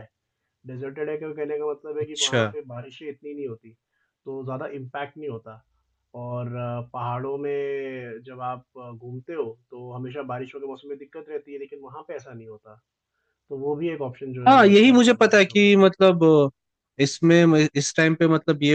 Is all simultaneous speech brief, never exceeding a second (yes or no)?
no